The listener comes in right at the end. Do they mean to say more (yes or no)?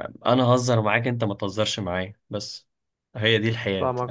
yes